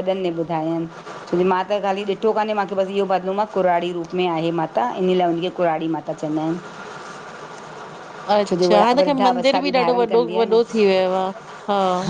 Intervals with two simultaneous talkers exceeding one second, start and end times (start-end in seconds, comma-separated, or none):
8.5-10.6